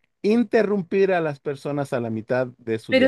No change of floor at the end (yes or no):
no